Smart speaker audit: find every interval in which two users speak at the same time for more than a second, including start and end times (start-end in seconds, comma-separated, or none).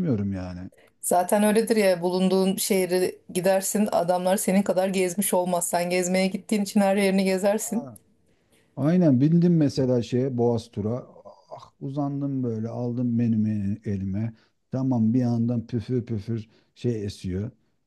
none